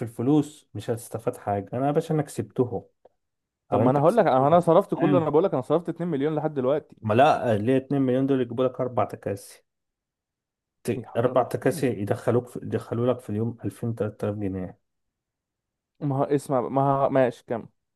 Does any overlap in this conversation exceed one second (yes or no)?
yes